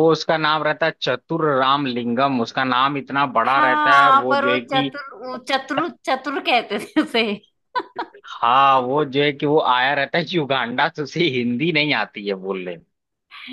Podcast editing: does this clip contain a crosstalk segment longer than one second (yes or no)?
yes